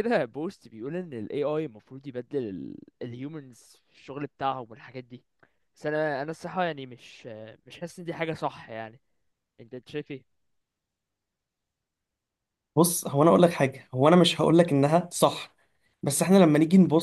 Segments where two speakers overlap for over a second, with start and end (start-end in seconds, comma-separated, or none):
none